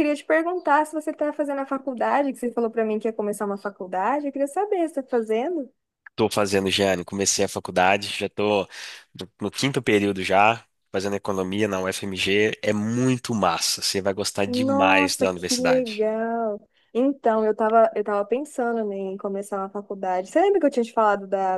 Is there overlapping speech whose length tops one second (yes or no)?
yes